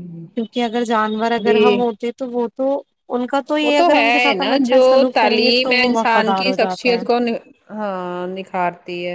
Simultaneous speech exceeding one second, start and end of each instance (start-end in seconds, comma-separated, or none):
3.6-7.0